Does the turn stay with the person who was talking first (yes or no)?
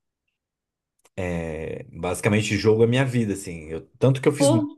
yes